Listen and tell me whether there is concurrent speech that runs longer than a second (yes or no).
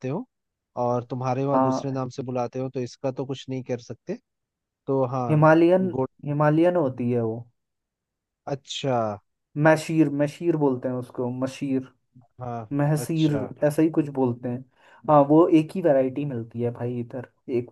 no